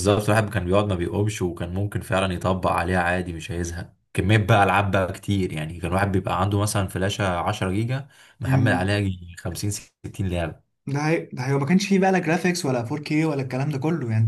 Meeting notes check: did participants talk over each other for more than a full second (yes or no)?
no